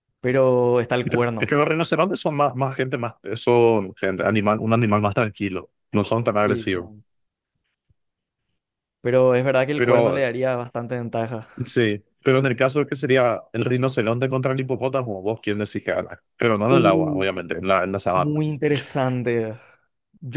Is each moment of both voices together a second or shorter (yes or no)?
yes